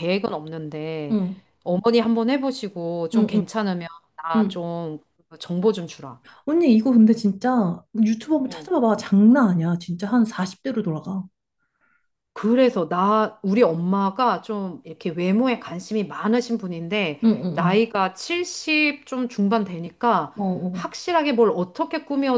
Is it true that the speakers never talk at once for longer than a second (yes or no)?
yes